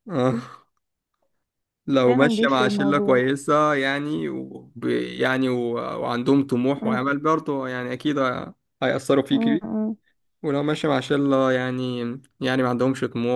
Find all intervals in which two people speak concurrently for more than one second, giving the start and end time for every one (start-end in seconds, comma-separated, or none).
2.0-3.3